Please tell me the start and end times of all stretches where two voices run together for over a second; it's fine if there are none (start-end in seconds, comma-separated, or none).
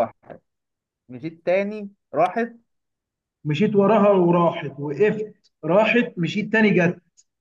none